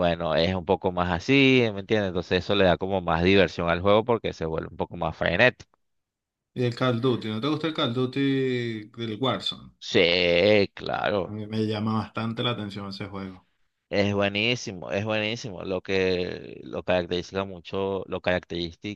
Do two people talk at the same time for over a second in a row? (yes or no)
no